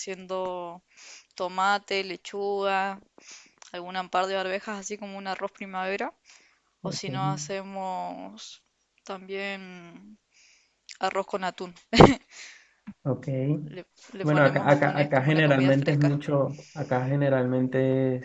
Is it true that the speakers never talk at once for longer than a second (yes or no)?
no